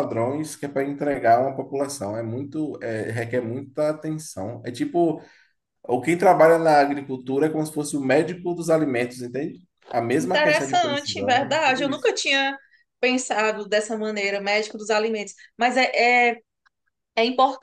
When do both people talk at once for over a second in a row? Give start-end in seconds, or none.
10.2-12.1